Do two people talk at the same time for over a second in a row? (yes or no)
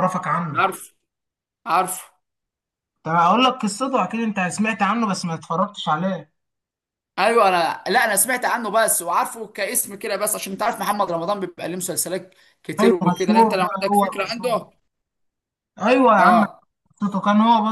yes